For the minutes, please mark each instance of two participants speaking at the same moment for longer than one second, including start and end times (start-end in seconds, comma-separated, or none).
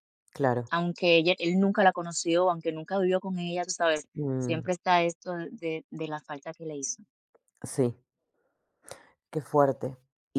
none